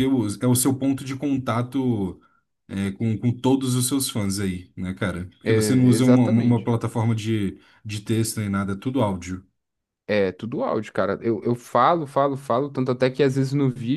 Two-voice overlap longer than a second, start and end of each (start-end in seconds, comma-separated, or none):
5.4-6.7